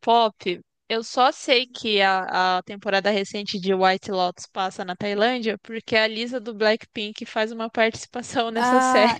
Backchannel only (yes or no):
no